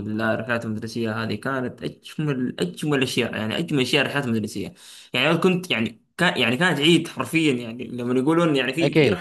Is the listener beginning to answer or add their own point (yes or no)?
no